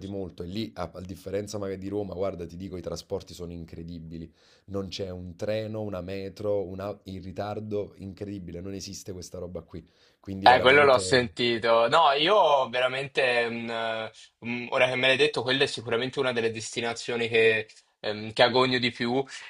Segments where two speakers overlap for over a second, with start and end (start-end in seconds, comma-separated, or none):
none